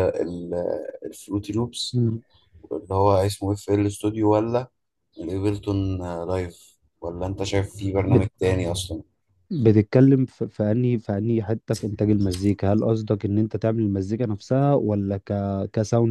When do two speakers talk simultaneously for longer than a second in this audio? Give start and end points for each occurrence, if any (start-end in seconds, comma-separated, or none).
none